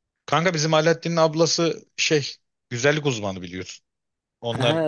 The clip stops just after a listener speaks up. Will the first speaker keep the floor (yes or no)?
yes